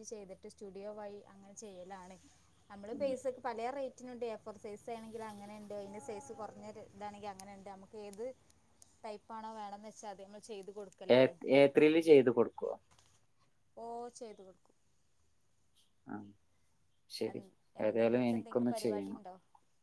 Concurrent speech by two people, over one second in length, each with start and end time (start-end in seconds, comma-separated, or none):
17.9-19.2